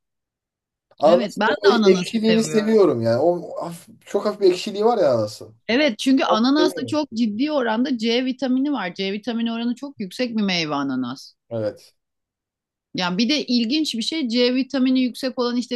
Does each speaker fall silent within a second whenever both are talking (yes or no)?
no